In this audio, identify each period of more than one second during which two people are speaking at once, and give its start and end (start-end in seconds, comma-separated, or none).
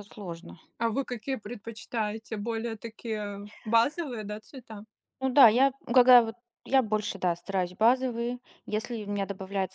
none